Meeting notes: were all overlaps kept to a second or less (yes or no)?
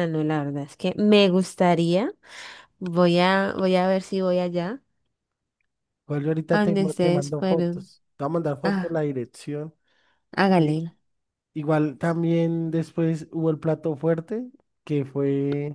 no